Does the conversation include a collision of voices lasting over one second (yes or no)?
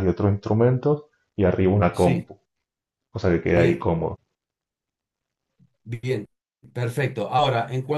no